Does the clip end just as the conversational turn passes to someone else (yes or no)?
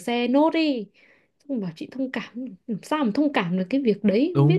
yes